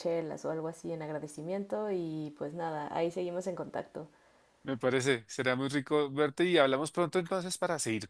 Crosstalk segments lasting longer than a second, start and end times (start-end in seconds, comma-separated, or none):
none